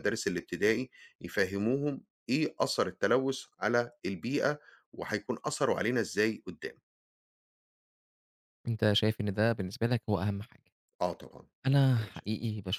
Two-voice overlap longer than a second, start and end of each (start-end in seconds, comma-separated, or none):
none